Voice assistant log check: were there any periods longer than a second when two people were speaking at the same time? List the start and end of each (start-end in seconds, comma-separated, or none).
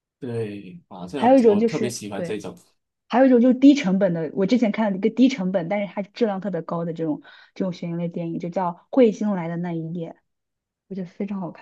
1.1-2.4